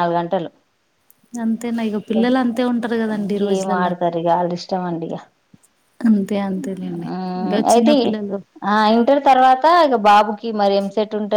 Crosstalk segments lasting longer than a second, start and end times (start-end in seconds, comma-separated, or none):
2.2-3.9